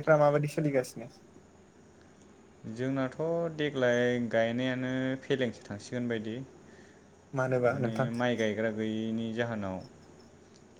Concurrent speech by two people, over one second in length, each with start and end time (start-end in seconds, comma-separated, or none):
none